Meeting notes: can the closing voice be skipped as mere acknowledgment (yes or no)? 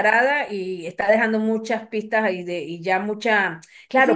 yes